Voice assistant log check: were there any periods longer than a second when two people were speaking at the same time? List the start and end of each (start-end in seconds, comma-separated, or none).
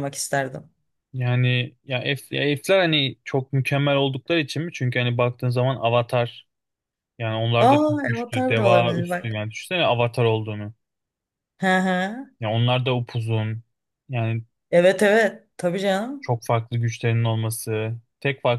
7.6-9.4